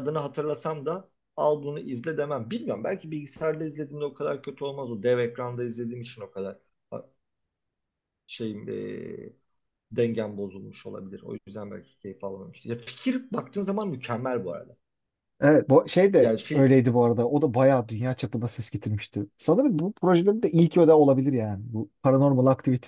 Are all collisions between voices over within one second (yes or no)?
yes